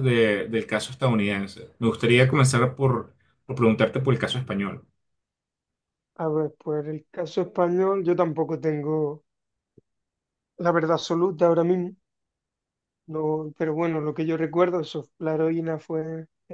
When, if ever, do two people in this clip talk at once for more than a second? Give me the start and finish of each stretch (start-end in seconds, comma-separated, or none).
none